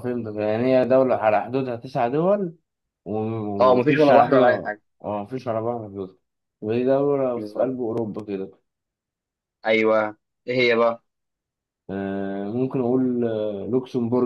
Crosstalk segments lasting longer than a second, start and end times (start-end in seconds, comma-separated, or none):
3.6-4.8